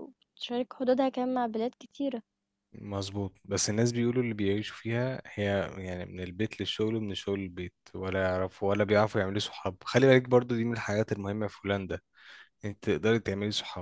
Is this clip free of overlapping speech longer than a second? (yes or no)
yes